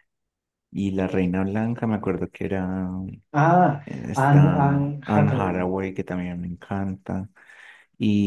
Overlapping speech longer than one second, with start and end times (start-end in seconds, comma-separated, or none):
3.8-5.7